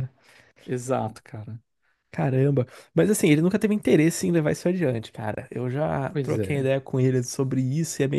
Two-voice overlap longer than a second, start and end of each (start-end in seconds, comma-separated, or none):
none